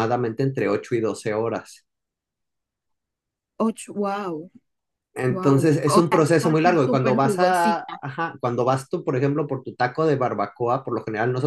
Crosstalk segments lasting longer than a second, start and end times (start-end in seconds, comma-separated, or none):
5.3-8.0